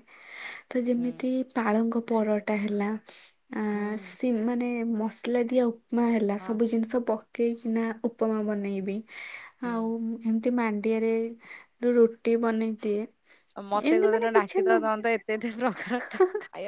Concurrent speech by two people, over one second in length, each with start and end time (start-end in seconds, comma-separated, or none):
none